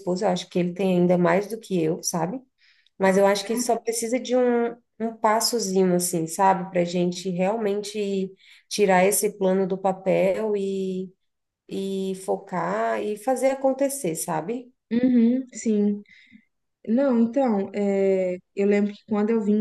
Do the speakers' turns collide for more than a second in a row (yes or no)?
no